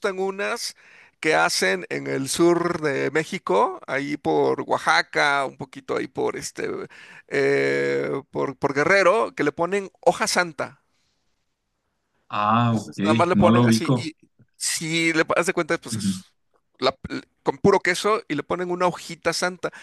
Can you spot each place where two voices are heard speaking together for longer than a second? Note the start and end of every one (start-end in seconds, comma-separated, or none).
12.7-14.1